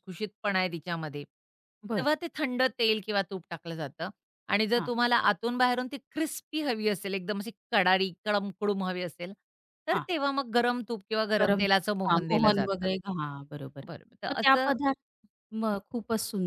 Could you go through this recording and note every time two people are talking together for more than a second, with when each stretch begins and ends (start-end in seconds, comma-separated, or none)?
11.4-12.9